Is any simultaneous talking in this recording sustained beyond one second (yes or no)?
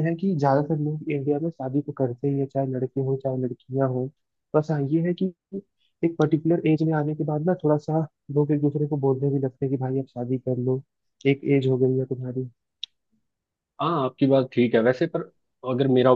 no